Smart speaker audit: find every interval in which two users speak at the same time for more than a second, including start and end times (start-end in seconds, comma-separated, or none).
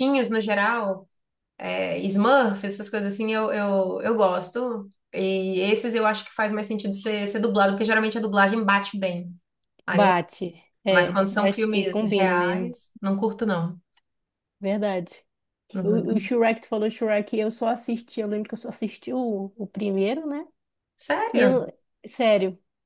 10.9-12.8